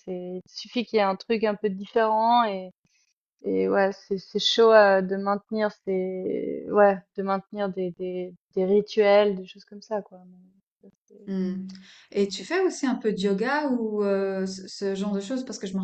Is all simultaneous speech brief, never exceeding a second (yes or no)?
yes